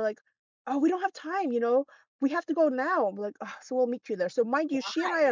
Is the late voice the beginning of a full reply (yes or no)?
no